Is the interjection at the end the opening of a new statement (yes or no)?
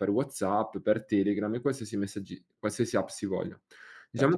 yes